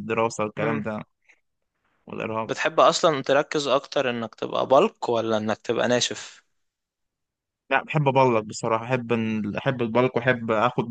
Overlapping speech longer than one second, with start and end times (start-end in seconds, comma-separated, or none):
none